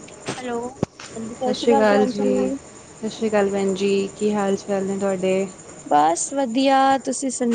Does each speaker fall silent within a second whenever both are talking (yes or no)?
yes